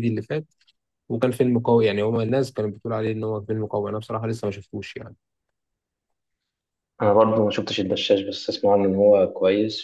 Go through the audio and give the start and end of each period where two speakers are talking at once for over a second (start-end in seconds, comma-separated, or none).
none